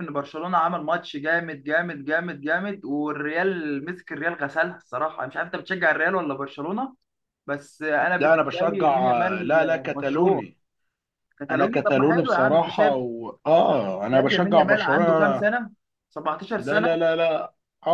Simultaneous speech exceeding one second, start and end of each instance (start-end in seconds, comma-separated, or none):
8.2-10.4, 11.5-12.9, 14.1-15.5